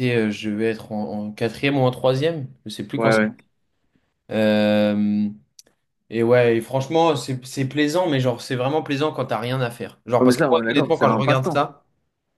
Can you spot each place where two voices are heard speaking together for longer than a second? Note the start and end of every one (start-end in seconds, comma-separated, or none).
10.2-11.7